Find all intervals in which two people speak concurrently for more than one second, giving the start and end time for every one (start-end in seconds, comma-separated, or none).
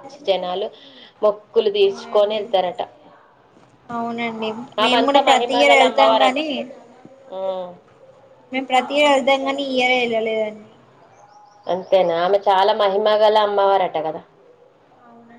4.8-6.4